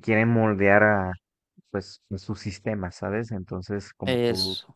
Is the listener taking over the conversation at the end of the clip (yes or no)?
no